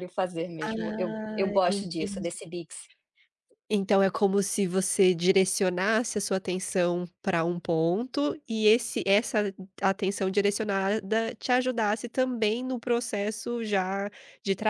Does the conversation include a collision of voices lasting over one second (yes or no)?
yes